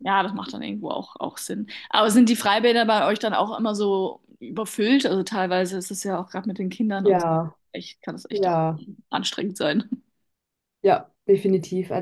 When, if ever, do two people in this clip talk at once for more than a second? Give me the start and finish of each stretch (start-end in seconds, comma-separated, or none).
none